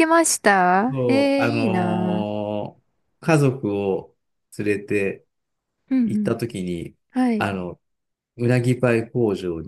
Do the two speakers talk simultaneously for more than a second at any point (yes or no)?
yes